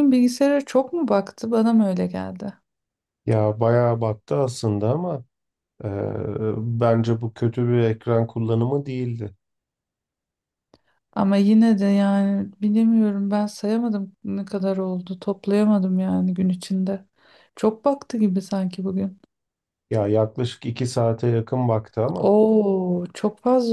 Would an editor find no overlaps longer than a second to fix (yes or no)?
yes